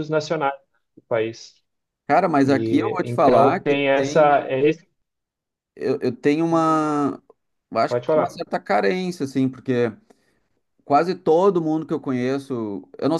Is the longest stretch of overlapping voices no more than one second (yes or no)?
no